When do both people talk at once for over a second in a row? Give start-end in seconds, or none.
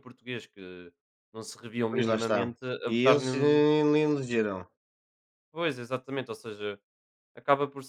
1.9-3.7